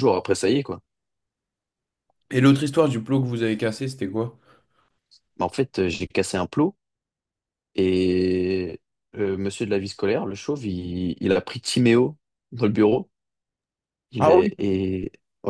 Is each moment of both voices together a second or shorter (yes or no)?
yes